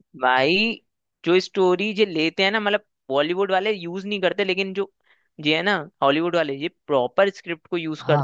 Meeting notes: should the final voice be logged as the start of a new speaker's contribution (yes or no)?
no